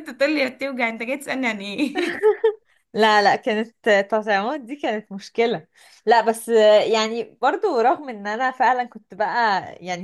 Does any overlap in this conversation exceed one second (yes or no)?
no